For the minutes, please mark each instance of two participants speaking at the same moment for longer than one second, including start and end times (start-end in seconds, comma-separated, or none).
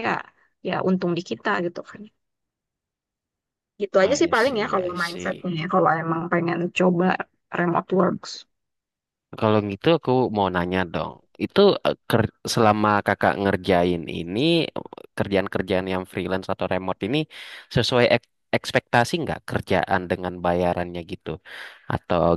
4.0-5.5